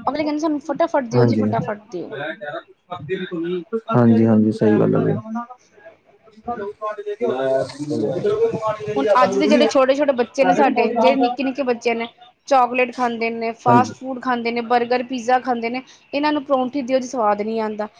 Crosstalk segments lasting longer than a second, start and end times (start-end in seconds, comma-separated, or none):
none